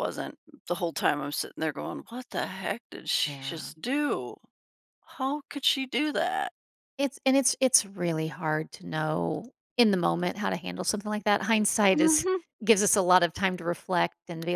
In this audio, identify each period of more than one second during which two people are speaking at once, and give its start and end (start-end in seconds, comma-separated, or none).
none